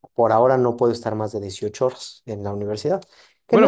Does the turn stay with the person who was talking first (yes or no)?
no